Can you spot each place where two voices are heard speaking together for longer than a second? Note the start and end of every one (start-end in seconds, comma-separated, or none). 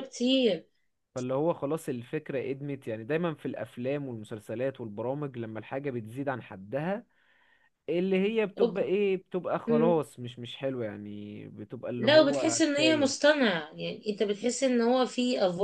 12.0-13.3